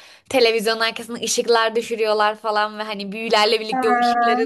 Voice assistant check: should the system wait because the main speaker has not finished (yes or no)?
yes